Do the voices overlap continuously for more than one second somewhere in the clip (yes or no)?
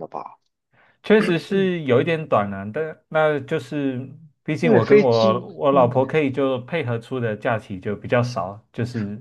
yes